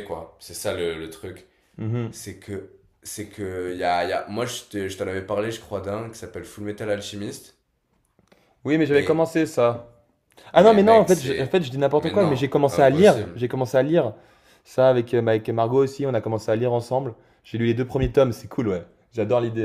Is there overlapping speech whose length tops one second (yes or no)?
yes